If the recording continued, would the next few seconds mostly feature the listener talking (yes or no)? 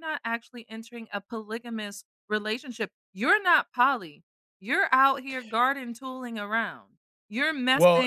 no